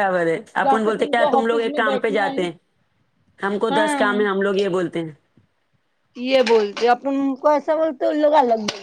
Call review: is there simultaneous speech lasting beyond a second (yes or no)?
yes